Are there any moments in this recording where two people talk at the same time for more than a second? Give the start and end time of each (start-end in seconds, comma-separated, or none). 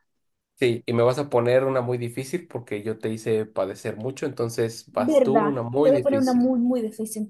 4.9-6.5